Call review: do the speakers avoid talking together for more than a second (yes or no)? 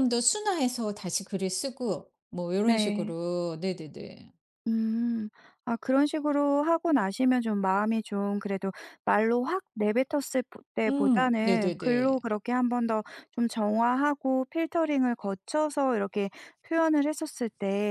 no